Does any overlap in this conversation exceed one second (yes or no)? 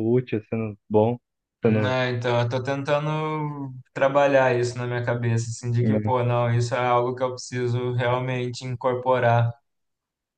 no